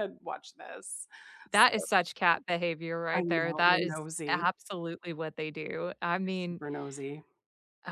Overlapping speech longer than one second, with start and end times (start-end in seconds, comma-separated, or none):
3.1-4.5